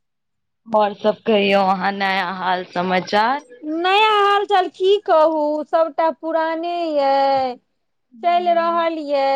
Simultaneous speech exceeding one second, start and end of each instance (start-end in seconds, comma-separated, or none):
none